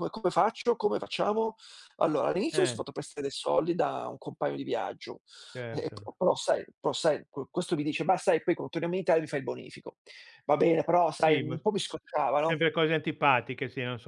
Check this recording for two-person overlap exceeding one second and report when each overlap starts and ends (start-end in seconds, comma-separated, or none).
none